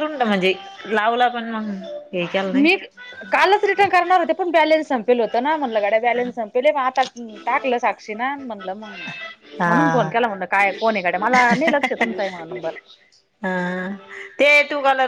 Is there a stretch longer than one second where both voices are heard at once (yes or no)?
no